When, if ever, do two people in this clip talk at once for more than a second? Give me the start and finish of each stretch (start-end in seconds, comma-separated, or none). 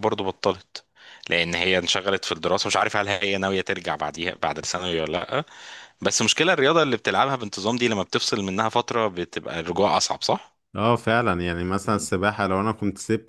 none